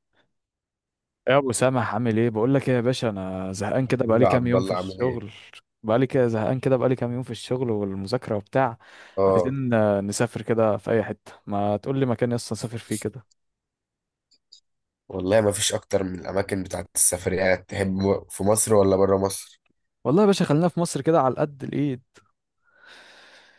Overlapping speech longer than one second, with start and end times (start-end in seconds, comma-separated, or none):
3.9-5.2